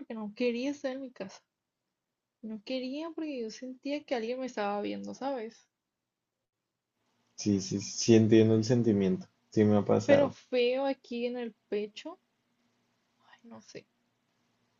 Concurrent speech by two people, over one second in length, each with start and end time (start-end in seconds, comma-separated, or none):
none